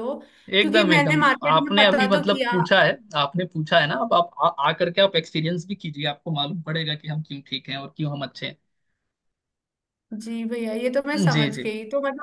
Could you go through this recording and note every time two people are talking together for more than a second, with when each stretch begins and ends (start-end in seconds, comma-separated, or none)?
0.6-2.6